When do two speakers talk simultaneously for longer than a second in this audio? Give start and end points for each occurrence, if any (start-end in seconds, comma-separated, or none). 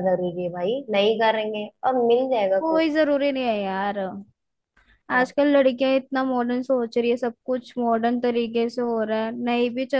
none